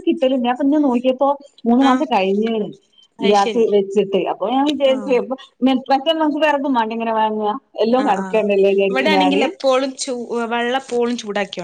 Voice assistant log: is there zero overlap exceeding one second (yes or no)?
yes